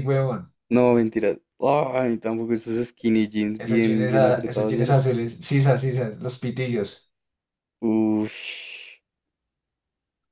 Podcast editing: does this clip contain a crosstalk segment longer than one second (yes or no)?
yes